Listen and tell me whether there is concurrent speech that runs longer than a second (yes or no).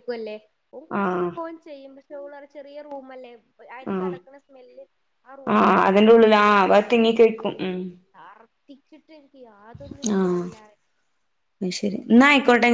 yes